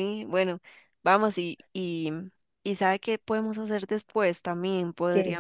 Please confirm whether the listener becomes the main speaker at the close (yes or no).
no